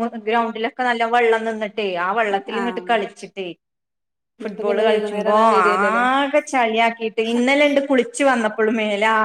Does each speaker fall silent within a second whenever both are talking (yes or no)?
no